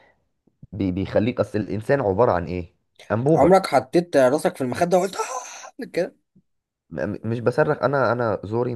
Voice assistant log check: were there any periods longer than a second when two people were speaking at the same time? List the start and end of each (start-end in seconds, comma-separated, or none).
none